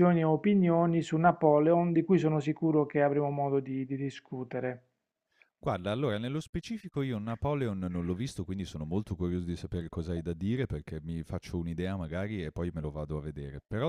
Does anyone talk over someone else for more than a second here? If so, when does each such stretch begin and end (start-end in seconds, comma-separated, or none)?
none